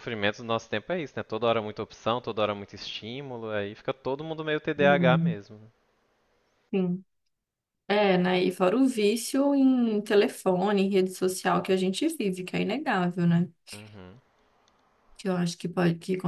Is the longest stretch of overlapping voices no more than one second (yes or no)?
yes